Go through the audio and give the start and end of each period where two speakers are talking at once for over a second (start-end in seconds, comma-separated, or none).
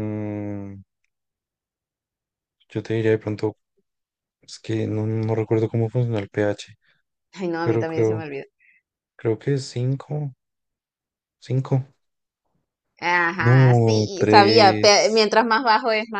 13.4-15.3